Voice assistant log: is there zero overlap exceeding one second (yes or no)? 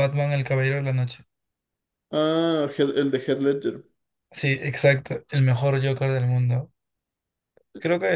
yes